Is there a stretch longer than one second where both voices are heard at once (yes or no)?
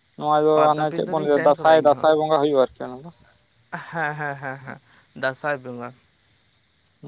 yes